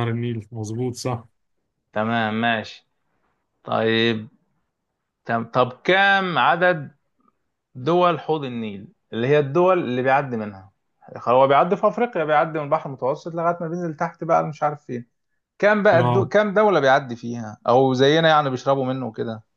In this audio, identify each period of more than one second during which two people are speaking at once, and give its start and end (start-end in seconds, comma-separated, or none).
none